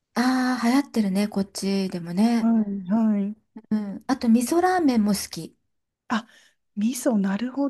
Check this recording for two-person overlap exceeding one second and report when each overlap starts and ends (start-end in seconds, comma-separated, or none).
none